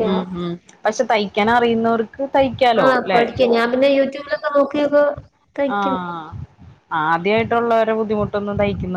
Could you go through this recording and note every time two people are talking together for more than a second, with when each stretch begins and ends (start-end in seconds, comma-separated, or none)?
none